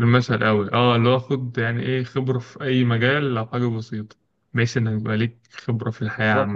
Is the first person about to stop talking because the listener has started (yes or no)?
yes